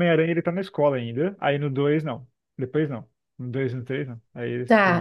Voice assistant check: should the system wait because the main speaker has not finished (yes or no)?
no